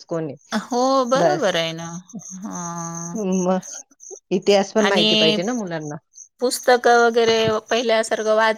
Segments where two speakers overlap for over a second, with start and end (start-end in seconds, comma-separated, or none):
none